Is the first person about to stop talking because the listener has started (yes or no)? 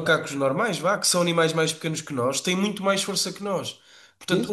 no